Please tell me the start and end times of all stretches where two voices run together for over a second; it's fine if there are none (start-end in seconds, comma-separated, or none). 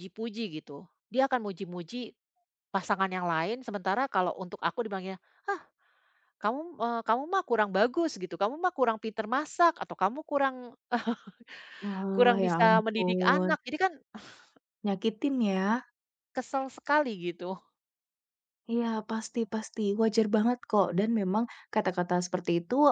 12.1-13.5